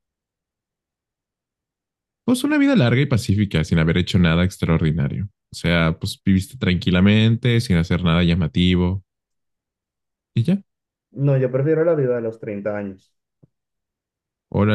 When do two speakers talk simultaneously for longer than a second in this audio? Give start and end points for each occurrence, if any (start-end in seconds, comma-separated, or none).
none